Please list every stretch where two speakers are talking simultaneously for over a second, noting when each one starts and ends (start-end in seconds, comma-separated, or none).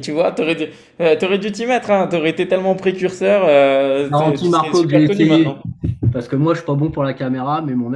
4.0-5.6